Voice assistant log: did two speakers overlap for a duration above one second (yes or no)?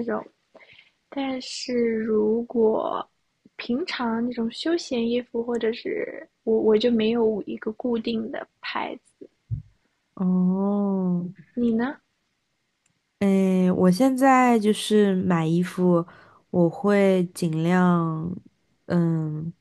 no